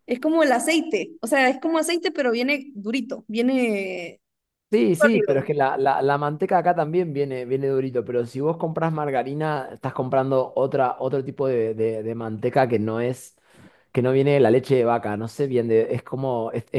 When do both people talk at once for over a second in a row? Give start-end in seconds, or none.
none